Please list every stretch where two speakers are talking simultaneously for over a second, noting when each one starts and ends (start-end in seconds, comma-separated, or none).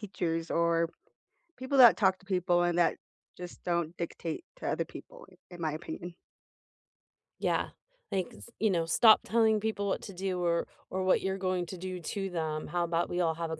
none